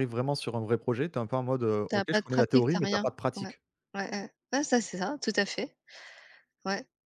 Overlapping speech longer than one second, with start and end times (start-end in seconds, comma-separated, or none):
1.9-3.5